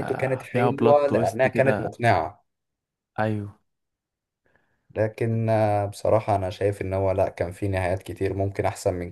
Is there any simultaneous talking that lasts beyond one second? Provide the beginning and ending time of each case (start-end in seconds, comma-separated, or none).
0.5-1.9